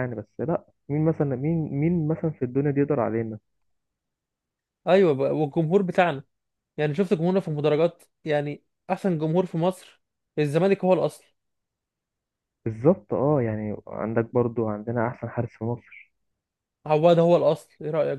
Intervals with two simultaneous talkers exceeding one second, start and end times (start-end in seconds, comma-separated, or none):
none